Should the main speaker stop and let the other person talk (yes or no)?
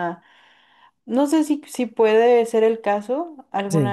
no